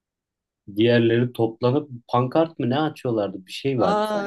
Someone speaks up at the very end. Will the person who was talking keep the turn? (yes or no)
no